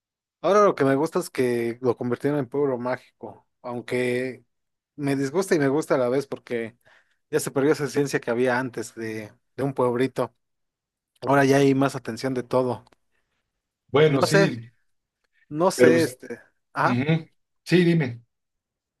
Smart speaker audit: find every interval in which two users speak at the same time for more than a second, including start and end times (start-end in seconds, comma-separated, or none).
none